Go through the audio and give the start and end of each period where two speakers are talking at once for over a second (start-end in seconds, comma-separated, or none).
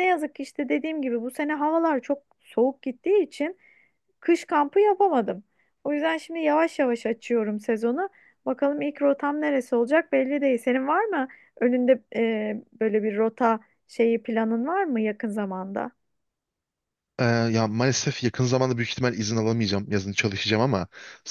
none